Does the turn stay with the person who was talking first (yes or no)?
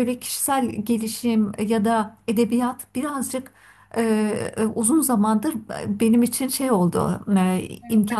yes